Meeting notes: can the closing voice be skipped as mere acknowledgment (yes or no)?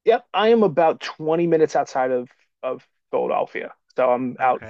no